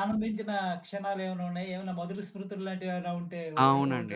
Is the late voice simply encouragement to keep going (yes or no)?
no